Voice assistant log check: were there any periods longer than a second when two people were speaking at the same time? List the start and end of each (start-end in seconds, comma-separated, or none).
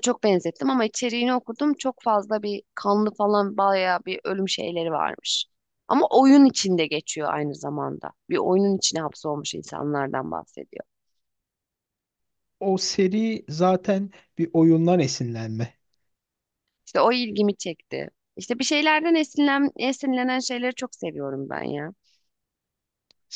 none